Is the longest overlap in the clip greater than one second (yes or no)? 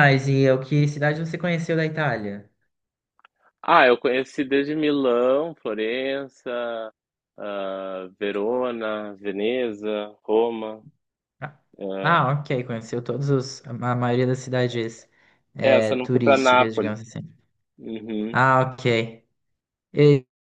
yes